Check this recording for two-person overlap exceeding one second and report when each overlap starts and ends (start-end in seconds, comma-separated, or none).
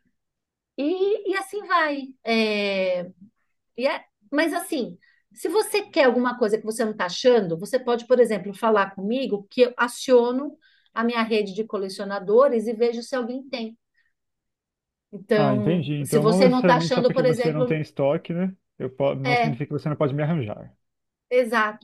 15.3-17.8